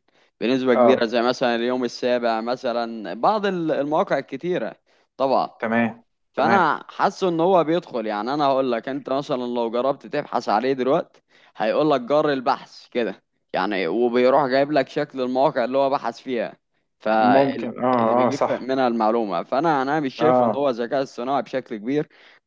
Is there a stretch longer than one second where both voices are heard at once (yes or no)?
yes